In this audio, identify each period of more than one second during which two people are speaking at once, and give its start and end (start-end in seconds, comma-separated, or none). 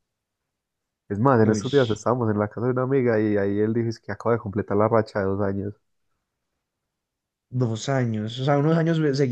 none